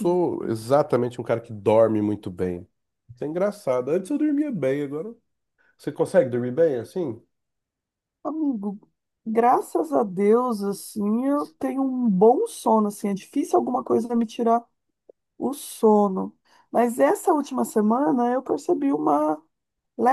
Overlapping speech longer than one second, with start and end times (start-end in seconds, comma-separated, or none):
none